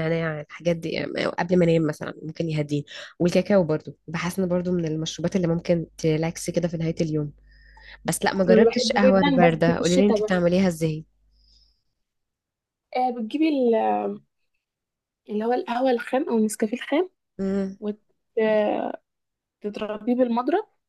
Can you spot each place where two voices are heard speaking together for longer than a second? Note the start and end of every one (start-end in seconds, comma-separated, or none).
8.4-10.4